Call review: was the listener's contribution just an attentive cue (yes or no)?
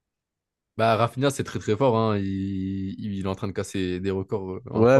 no